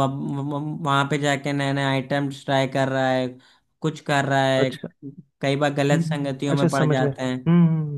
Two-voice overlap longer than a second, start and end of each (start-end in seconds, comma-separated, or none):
5.9-7.4